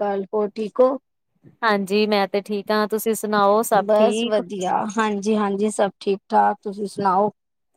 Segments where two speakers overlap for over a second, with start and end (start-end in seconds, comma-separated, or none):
none